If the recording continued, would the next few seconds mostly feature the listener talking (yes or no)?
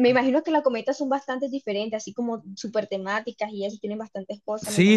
yes